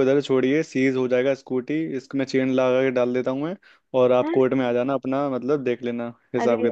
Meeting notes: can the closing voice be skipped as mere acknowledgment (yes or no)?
no